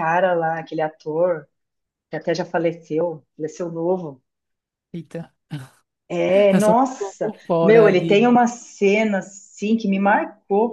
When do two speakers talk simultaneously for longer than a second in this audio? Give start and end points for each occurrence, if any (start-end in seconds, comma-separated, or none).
6.5-8.2